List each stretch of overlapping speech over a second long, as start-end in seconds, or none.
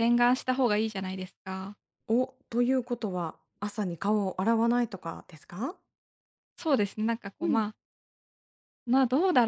none